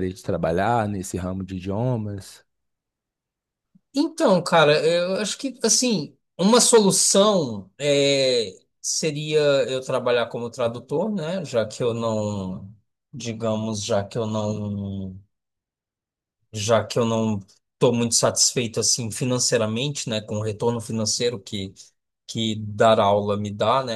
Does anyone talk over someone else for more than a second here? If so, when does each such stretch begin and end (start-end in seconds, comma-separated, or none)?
none